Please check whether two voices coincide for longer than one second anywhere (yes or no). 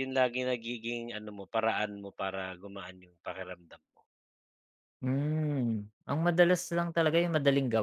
no